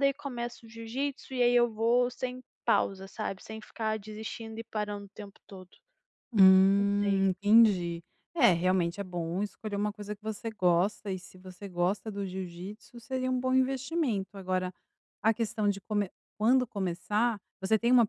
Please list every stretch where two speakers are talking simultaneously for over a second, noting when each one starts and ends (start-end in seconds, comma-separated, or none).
none